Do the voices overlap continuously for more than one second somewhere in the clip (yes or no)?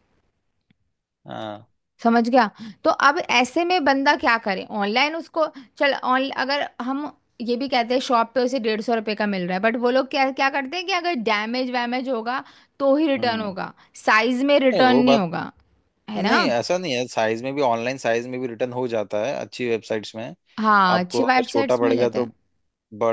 yes